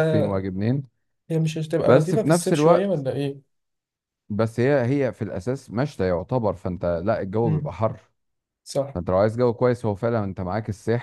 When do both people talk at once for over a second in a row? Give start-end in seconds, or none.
1.8-3.1